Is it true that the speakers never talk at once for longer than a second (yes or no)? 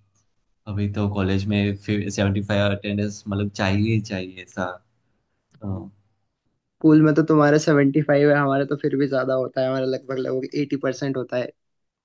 yes